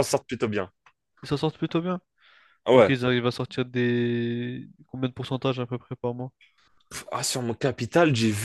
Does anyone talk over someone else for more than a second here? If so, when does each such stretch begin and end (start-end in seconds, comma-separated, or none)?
none